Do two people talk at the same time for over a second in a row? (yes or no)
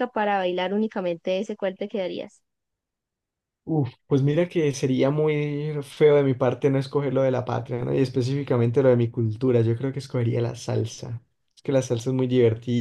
no